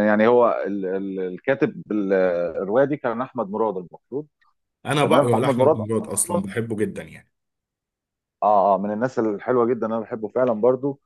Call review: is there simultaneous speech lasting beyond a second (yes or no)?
yes